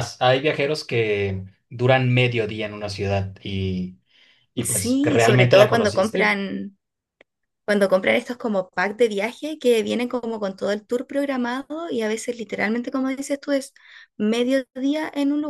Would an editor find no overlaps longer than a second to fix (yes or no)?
no